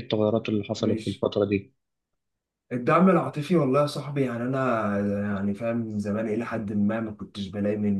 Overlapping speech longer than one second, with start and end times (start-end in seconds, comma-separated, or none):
none